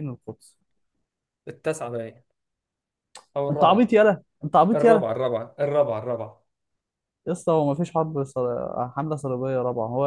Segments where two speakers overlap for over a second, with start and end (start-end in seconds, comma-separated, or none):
none